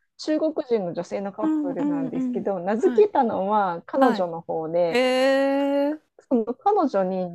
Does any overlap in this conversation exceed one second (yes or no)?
yes